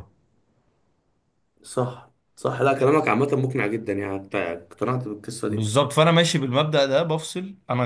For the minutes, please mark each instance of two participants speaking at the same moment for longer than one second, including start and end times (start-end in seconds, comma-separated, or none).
none